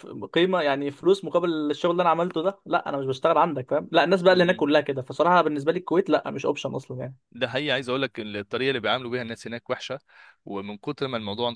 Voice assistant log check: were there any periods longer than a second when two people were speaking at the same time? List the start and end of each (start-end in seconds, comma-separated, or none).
none